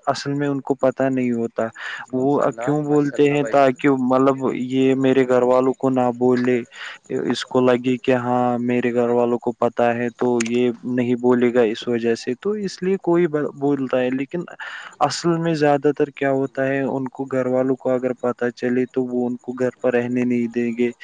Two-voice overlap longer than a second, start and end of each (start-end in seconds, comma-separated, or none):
2.1-3.8